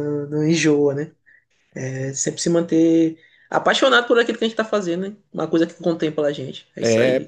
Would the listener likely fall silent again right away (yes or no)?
no